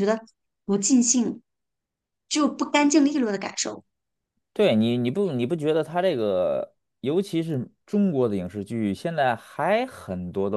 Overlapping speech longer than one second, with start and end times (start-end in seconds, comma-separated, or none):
none